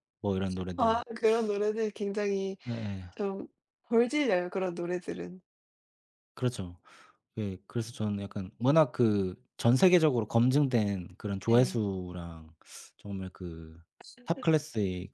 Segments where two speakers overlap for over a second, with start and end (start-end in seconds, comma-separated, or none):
none